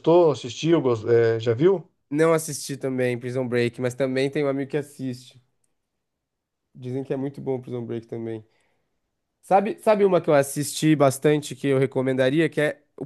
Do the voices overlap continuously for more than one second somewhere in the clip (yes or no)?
no